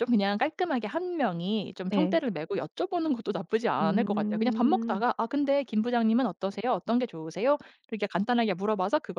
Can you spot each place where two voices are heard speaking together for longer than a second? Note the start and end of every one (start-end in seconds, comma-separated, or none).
3.8-5.0